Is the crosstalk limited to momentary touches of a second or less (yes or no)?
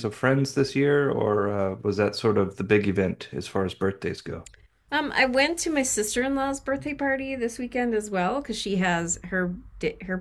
yes